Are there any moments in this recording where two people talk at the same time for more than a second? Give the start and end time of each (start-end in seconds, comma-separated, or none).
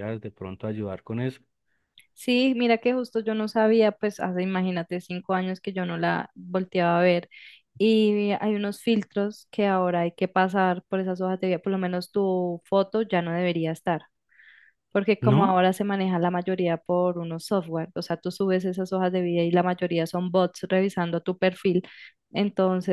none